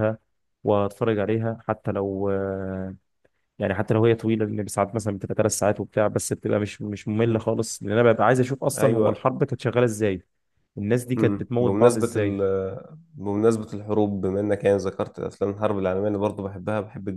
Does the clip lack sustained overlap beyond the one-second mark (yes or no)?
no